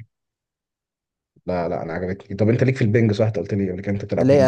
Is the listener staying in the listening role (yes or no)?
no